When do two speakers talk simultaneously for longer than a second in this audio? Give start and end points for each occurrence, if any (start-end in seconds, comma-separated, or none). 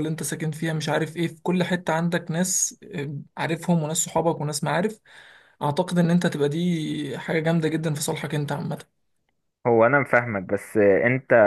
none